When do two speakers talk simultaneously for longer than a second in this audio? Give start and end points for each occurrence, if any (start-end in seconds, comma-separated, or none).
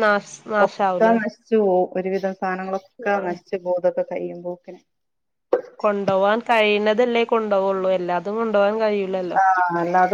none